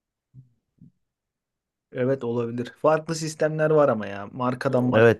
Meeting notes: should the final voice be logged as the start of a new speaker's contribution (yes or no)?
yes